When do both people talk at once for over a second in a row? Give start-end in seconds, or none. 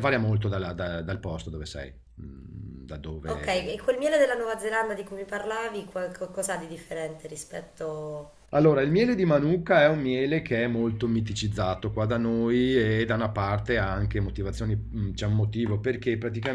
none